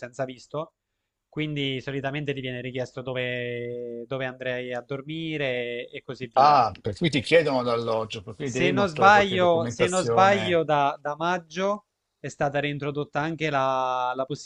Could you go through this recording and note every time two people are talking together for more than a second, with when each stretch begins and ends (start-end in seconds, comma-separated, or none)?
8.4-10.6